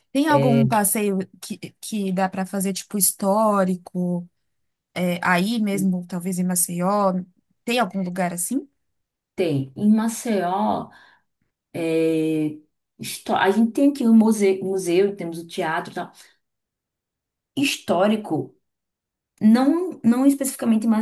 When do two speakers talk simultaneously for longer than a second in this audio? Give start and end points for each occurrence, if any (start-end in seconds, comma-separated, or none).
none